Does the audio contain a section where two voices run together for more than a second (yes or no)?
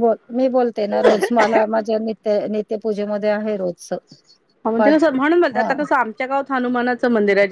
no